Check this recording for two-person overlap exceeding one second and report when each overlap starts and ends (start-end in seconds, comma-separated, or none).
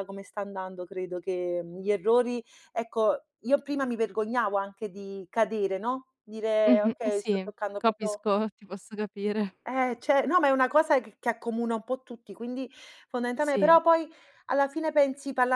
6.6-8.2